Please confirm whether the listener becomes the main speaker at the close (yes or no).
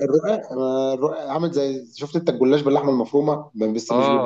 yes